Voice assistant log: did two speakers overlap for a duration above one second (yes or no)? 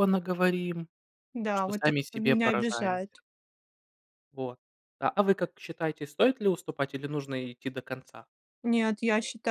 yes